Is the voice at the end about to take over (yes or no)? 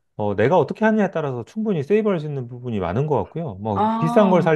no